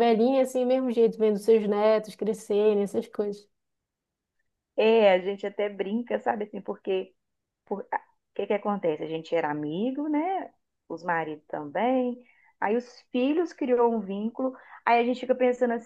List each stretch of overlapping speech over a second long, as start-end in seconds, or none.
none